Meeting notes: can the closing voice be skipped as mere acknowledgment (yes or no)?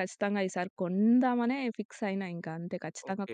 no